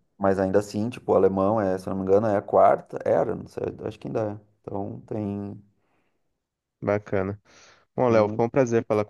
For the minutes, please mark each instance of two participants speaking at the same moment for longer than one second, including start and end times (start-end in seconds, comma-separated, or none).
none